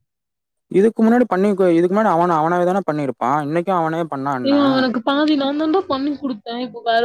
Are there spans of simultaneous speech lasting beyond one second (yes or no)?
no